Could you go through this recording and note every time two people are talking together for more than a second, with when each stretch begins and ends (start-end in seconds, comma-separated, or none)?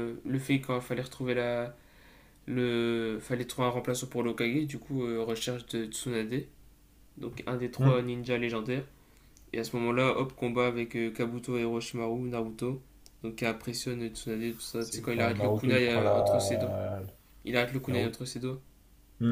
14.8-16.7